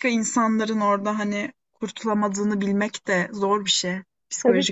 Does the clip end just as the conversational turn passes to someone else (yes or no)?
yes